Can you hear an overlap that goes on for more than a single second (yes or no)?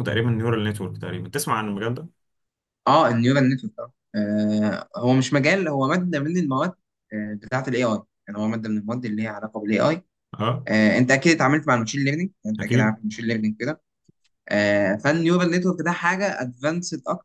no